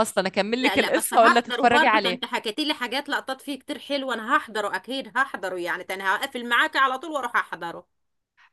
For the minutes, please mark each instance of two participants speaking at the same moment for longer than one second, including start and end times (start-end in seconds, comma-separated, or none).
0.6-2.2